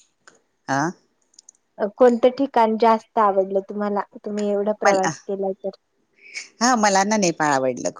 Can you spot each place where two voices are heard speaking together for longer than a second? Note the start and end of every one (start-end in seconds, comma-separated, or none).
none